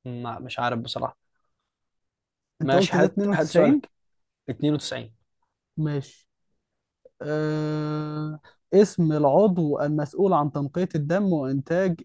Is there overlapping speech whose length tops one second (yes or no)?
yes